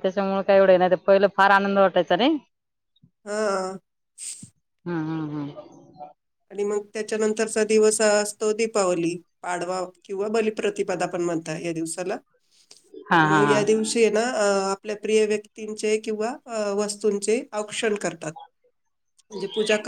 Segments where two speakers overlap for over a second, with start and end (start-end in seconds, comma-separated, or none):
none